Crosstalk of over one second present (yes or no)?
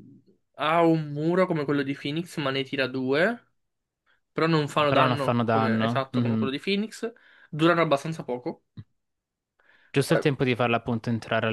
yes